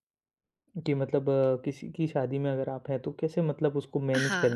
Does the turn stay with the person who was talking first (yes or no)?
no